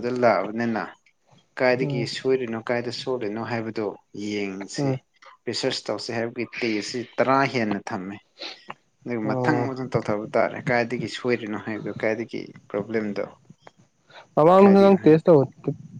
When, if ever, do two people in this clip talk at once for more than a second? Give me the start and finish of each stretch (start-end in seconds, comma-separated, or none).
none